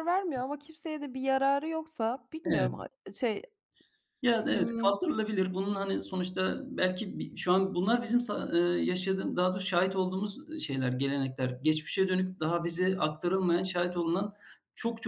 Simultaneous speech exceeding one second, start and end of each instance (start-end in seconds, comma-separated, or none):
none